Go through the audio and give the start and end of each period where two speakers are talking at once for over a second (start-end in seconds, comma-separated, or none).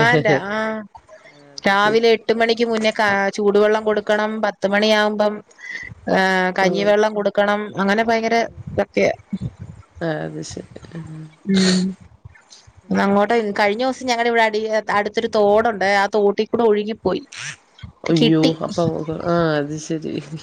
none